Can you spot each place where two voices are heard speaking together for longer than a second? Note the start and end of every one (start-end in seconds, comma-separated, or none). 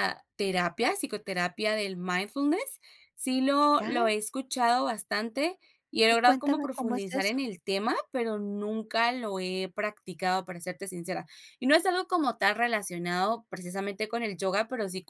6.1-7.4